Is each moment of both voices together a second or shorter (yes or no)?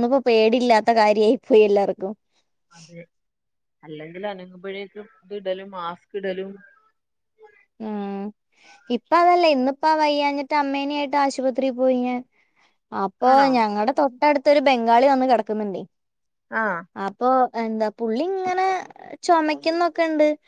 yes